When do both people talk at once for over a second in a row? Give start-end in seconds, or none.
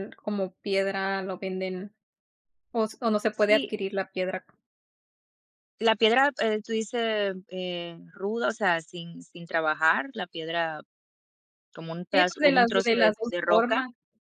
12.1-13.8